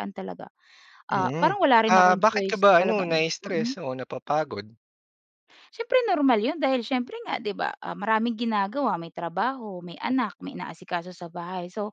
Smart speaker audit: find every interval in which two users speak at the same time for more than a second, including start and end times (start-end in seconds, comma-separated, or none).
1.1-3.8